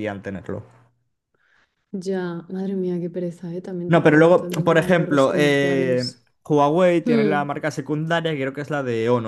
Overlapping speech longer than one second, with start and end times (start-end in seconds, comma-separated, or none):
3.9-6.2